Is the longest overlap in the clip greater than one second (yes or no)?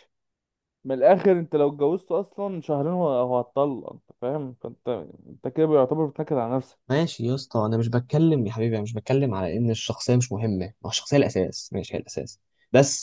no